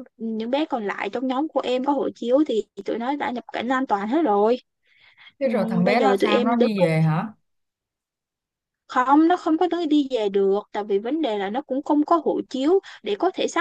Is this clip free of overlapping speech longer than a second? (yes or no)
no